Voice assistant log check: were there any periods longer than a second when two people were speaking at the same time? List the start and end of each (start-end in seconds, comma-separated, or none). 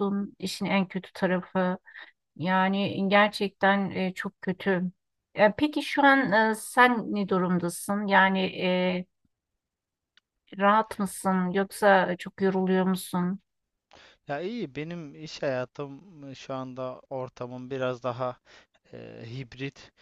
none